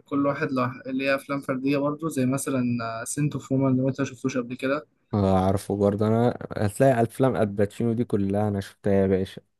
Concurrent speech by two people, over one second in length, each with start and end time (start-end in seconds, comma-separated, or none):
none